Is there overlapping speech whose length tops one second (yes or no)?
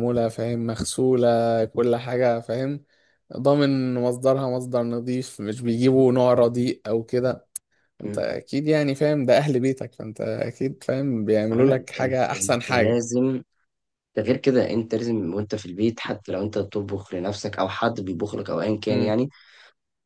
yes